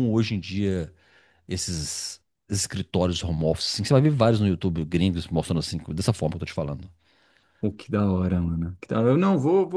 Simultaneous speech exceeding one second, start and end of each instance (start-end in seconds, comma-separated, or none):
none